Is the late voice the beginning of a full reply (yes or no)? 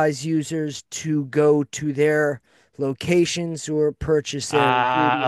yes